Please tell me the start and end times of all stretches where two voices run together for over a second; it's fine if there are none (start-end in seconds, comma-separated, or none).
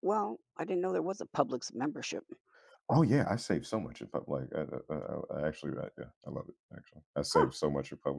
none